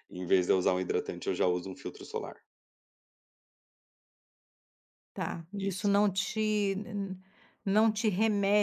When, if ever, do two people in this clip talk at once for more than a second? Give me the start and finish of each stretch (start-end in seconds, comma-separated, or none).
none